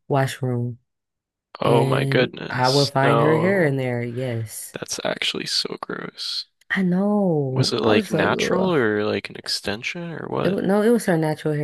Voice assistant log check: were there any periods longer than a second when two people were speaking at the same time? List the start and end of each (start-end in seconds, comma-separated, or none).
1.6-3.8, 7.5-8.7